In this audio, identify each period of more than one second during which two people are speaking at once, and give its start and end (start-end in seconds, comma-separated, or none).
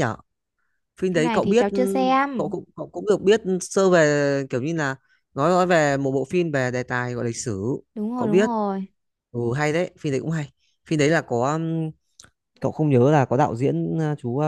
1.1-2.5